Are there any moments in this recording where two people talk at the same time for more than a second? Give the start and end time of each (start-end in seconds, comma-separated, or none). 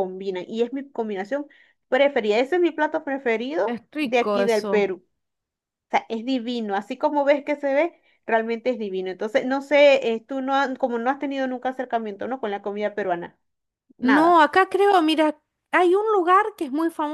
3.6-4.9